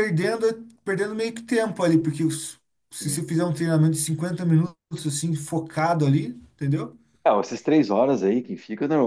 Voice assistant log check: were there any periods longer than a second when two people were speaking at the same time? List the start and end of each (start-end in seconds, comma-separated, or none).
none